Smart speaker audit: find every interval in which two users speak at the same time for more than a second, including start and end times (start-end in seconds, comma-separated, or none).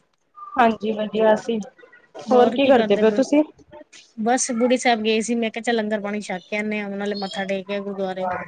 none